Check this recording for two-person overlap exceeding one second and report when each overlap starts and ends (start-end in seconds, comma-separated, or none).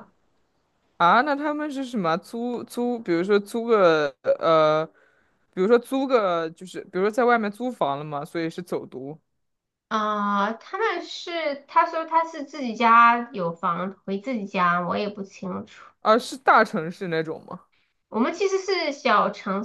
none